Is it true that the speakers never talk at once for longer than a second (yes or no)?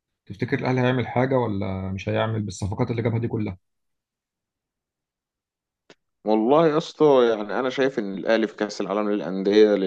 yes